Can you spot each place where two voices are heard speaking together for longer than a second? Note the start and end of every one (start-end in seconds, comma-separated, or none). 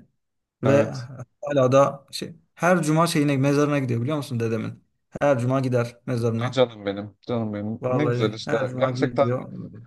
7.8-9.3